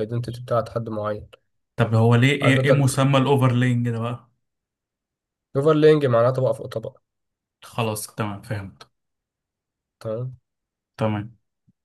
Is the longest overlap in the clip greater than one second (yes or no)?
no